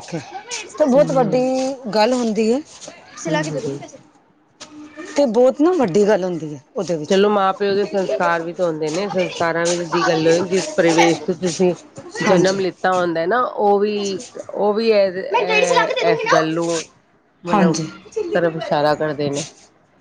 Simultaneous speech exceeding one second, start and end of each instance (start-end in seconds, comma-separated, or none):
none